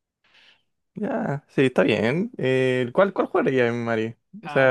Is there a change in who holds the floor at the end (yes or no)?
yes